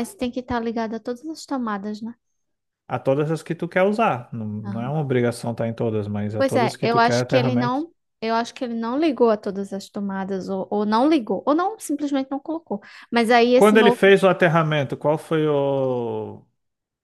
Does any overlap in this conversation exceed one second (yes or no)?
yes